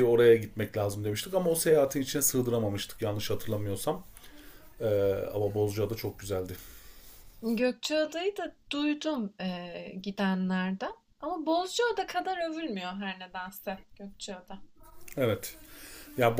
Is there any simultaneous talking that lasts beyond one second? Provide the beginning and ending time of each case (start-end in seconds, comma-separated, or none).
none